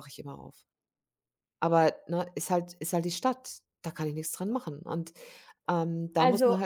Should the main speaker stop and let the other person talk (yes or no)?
no